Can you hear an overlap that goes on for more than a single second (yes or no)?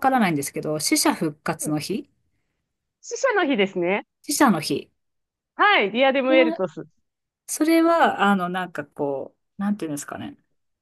no